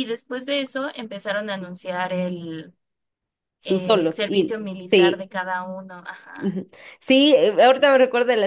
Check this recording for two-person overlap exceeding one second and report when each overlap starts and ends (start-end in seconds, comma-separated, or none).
3.6-5.3